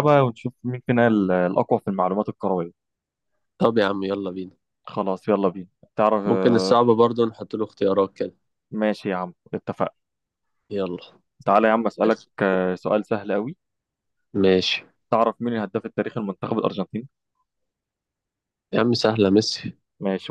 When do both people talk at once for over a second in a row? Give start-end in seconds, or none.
none